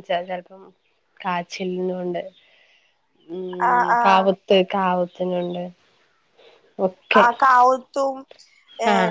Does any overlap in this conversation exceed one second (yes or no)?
no